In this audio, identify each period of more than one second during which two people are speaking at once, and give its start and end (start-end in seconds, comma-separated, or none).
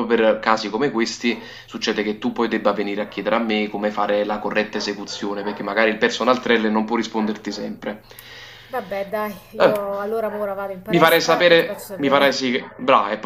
10.9-12.5